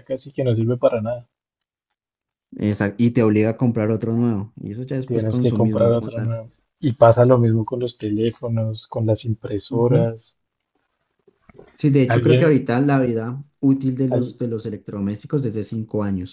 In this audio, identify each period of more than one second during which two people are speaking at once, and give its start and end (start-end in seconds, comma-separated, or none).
5.1-6.3